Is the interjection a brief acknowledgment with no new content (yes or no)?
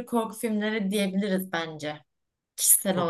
no